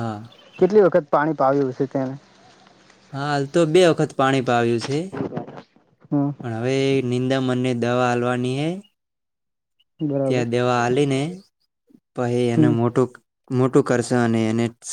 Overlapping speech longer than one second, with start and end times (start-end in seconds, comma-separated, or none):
none